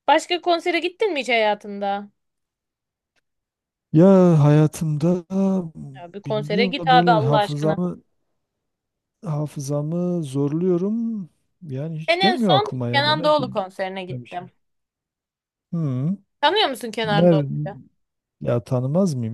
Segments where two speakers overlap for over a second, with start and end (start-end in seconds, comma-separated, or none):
6.3-7.8, 12.1-14.5